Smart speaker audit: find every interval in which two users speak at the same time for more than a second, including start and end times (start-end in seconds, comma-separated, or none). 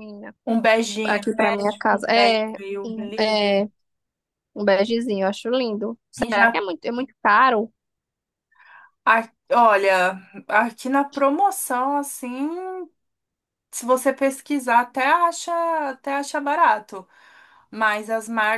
1.9-3.6